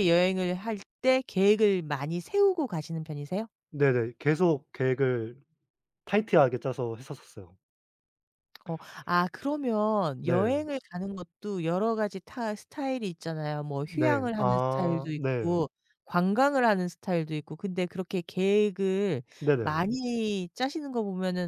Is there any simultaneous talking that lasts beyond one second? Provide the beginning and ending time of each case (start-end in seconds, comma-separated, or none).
13.8-15.6